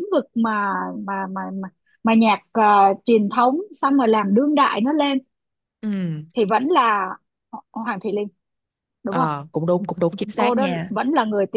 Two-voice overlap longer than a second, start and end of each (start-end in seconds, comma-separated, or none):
none